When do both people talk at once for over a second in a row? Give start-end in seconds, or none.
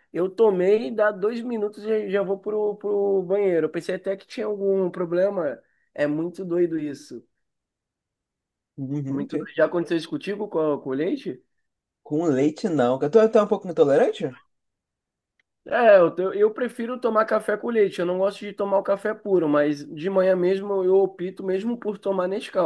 none